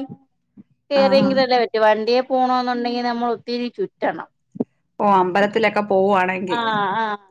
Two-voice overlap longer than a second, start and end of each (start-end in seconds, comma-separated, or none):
none